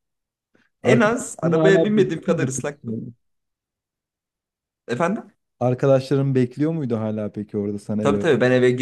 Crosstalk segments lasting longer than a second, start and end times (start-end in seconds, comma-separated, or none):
0.8-3.0